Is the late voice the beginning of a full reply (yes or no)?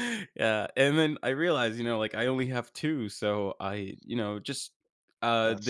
no